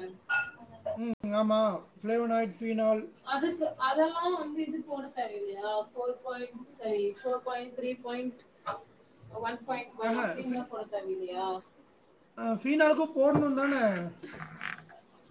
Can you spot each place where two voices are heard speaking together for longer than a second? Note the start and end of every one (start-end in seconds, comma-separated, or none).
none